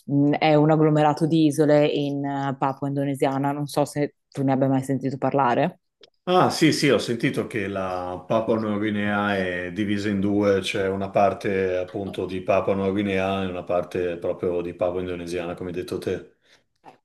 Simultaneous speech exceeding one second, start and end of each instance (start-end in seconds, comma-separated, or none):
none